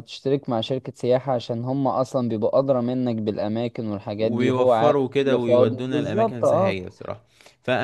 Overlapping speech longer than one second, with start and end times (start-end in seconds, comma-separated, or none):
4.2-6.8